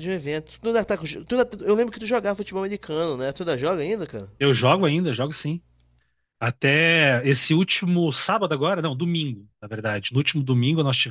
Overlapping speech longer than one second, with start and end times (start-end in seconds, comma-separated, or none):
none